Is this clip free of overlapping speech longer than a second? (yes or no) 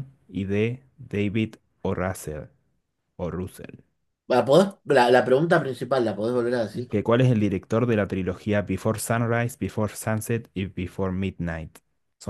yes